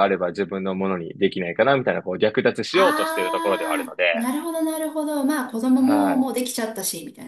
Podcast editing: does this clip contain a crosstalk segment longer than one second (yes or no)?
yes